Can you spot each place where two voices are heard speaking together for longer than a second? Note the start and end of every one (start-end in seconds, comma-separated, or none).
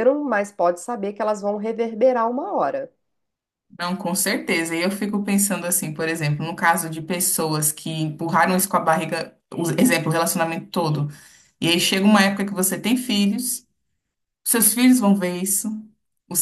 none